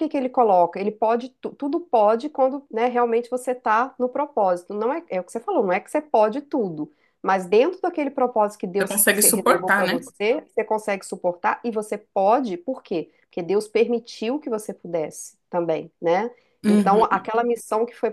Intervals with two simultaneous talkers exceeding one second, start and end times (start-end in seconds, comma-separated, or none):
8.8-10.1